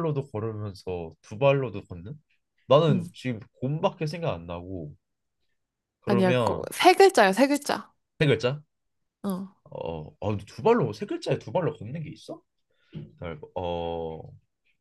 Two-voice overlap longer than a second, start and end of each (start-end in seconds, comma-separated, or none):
none